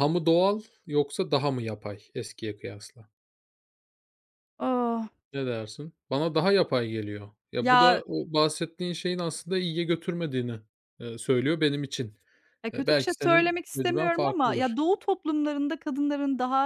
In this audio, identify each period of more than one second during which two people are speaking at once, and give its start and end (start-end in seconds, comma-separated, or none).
12.7-14.8